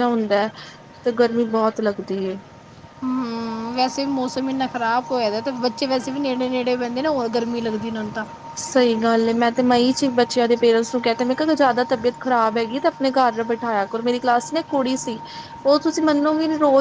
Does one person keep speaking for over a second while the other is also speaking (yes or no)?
no